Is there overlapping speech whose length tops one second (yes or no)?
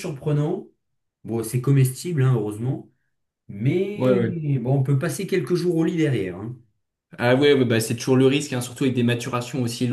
no